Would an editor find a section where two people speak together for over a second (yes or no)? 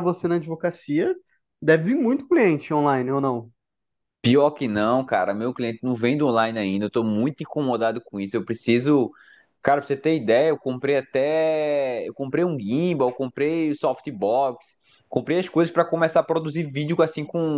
no